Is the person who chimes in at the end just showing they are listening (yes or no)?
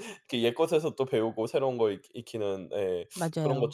yes